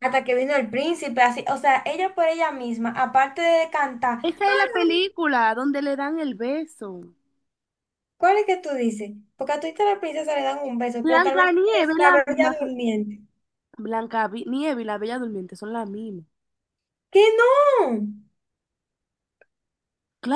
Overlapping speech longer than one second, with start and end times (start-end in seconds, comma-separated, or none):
11.0-12.6